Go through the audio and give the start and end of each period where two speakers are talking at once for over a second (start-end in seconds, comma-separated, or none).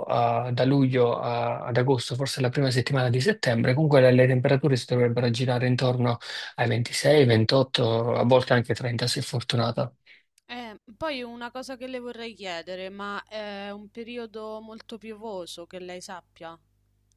none